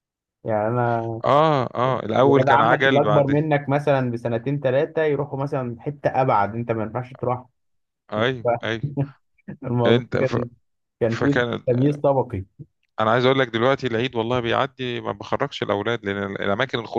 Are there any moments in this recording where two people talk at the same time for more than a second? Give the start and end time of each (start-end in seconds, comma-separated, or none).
2.1-3.4